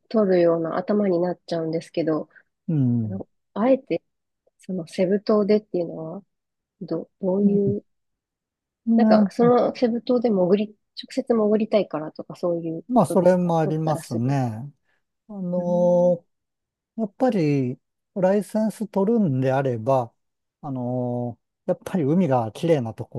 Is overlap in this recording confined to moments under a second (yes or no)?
no